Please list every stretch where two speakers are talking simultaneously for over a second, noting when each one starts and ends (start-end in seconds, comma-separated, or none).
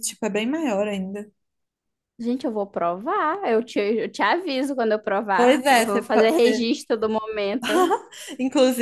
5.4-6.7